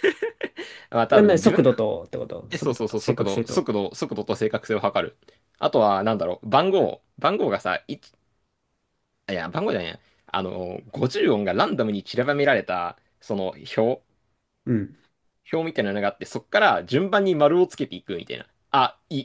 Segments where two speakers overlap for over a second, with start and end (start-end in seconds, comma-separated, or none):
2.5-3.7